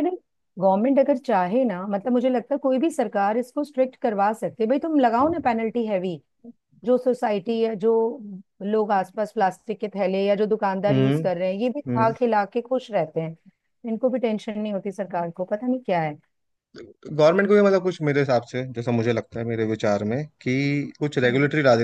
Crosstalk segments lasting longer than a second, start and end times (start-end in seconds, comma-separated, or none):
none